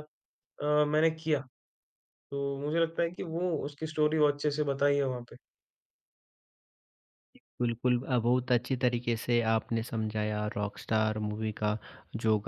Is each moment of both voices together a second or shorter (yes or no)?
yes